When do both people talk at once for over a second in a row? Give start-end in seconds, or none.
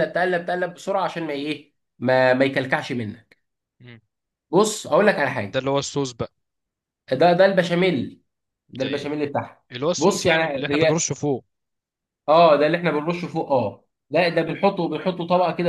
9.7-11.1